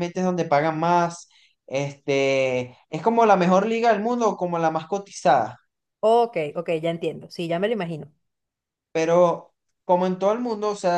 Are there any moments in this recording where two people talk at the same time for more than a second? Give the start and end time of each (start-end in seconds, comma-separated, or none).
none